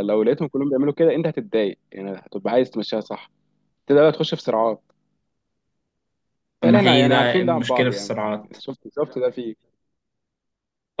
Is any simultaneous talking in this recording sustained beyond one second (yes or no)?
yes